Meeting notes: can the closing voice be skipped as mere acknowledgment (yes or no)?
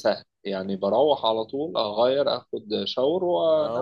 no